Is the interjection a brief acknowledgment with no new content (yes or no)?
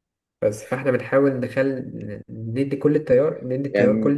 yes